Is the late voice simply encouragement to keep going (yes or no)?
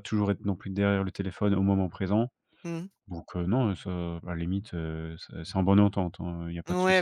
no